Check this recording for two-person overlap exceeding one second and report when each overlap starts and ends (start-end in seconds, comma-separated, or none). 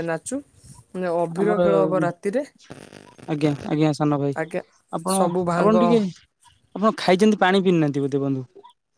none